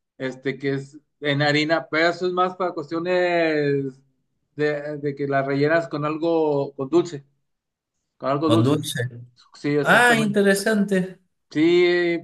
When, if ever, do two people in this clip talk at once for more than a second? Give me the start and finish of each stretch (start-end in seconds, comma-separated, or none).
none